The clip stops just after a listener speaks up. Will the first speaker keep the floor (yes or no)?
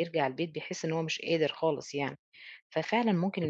yes